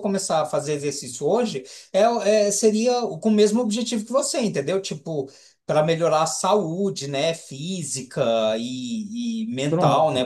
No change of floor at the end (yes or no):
yes